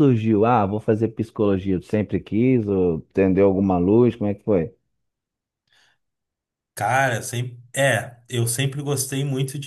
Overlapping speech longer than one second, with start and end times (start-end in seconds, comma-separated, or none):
none